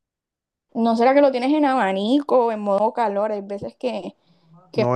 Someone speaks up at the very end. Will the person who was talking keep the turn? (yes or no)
no